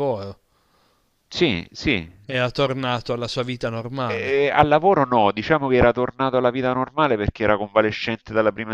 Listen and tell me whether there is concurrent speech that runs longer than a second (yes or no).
no